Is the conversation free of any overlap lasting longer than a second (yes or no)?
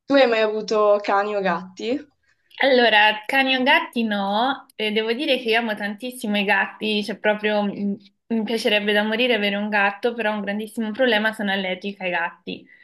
yes